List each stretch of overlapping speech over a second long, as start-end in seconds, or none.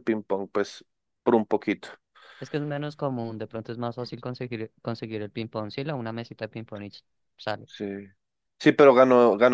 none